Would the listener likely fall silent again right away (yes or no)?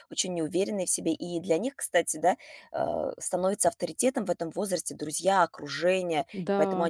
yes